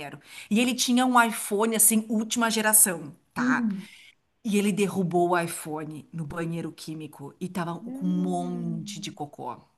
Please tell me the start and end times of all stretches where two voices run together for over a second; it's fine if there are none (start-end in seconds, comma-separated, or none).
7.8-9.2